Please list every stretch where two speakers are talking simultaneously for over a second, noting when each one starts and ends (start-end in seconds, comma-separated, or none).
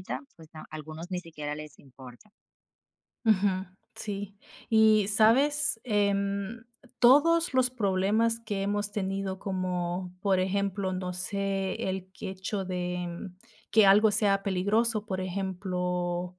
none